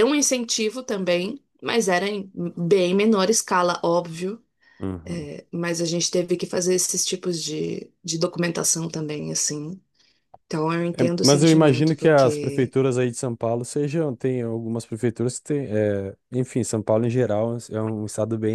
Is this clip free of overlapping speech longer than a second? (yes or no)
no